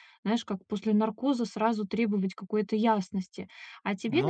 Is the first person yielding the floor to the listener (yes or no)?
no